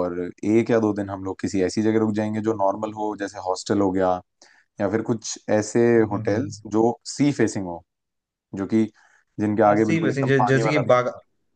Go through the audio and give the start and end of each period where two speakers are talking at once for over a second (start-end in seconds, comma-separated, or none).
9.7-11.0